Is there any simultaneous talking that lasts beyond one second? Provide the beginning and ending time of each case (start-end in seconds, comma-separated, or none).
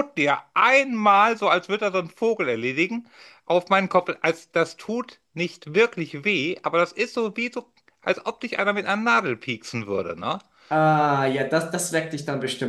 none